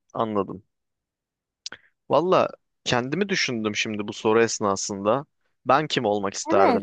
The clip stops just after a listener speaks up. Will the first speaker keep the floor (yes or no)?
no